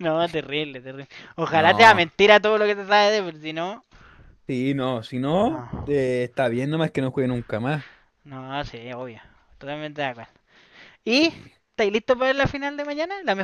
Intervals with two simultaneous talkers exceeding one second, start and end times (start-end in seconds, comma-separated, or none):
none